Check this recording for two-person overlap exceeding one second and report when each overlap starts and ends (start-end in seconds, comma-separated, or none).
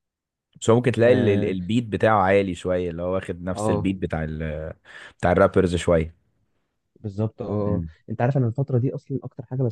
none